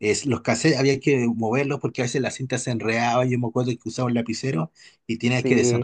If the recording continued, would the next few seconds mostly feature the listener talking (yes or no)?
no